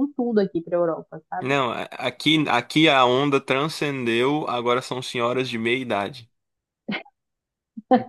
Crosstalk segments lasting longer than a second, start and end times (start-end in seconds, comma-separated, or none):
none